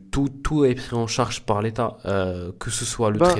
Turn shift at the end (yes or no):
no